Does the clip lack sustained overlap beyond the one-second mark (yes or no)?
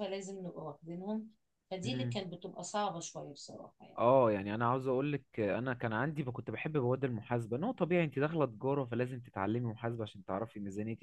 yes